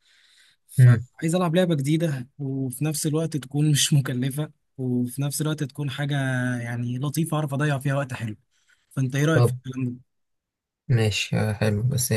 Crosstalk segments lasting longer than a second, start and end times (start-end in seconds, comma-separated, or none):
none